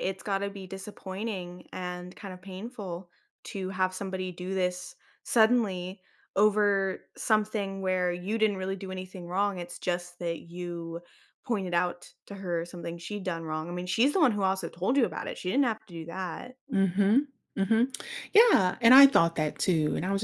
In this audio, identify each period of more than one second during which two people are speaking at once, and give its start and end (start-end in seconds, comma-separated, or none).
none